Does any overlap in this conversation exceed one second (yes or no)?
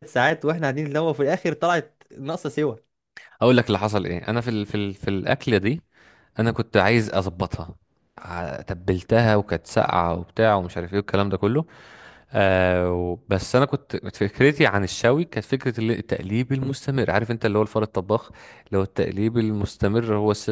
no